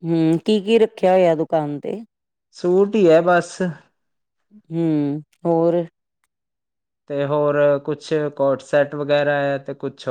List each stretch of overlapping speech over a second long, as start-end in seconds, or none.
none